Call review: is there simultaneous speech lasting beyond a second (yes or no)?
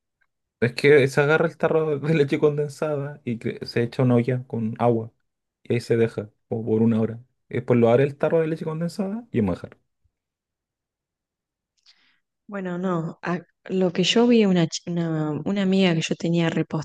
no